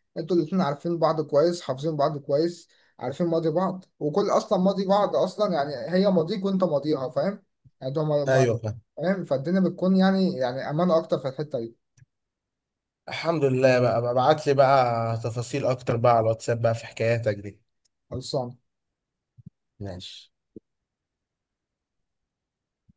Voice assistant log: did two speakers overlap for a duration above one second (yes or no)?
no